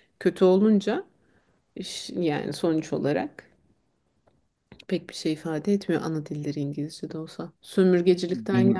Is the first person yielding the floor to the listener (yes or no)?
no